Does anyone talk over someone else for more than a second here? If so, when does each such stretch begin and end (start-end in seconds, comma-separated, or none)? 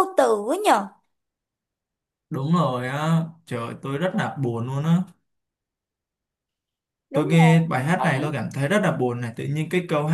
7.1-8.3